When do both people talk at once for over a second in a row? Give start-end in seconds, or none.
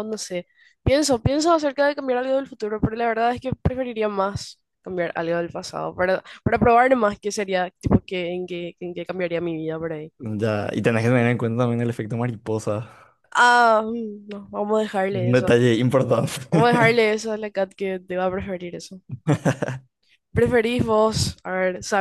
none